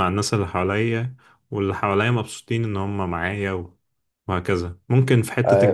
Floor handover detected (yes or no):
yes